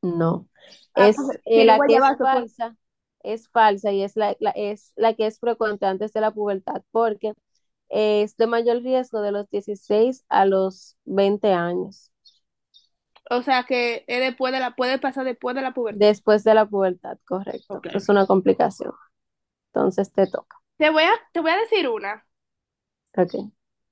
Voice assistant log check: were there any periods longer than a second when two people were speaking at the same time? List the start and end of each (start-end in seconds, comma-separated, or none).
0.9-2.5